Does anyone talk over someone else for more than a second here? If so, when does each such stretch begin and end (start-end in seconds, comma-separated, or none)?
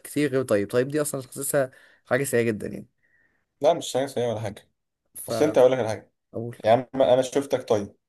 none